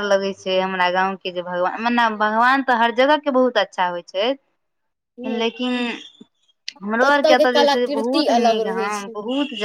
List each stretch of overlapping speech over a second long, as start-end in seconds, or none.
7.1-9.1